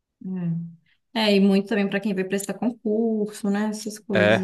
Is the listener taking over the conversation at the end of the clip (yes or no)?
yes